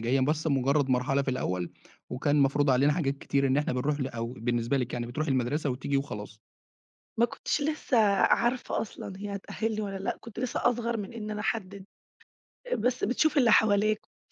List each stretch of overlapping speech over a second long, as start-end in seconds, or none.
none